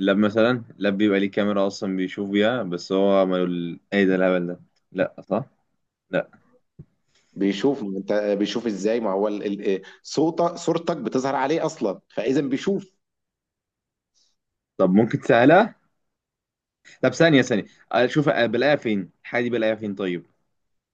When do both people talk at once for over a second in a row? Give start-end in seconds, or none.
none